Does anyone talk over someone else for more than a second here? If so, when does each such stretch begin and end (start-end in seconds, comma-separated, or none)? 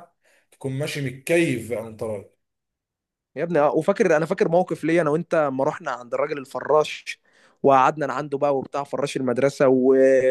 none